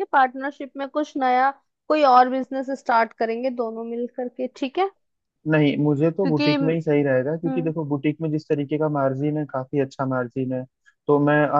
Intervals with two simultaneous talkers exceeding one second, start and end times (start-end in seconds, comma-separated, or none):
none